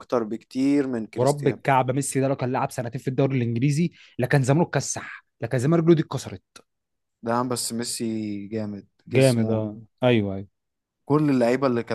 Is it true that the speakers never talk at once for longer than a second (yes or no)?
yes